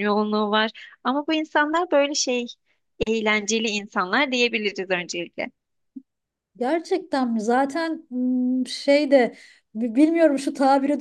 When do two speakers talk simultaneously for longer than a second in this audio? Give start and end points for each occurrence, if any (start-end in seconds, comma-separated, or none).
none